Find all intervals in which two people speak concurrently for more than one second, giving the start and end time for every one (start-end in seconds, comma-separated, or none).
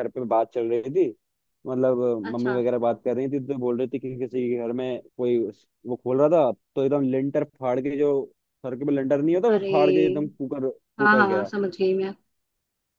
none